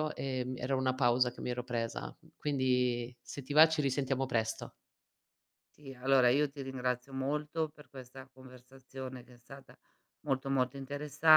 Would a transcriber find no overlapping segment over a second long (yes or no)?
yes